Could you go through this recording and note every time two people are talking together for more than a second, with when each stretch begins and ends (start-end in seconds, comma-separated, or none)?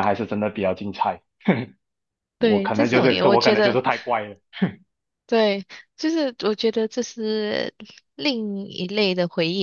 2.4-3.8